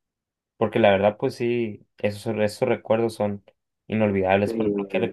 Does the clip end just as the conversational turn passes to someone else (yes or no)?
no